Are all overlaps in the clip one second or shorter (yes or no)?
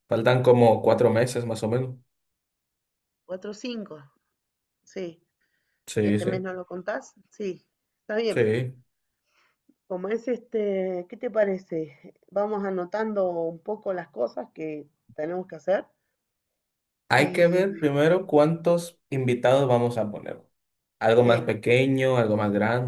yes